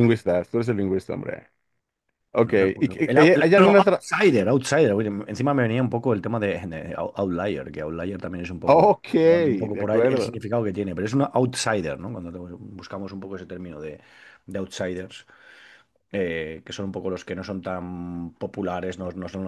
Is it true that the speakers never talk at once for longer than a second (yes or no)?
no